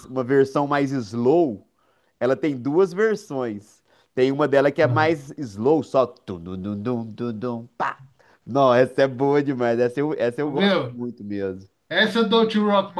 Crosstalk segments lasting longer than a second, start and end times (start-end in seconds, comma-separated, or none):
none